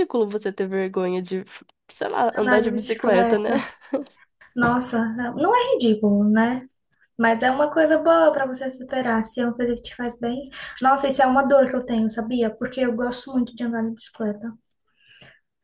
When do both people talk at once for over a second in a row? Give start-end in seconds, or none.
2.4-3.6